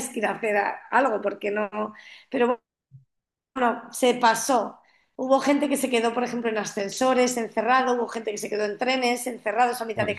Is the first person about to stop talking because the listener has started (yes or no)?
no